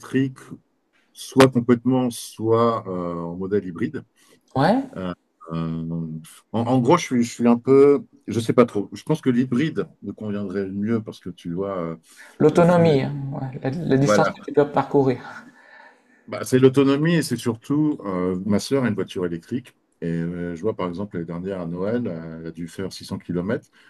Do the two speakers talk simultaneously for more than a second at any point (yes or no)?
no